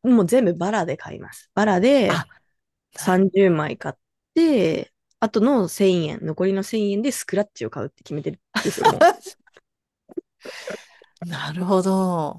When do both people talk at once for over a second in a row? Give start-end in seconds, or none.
none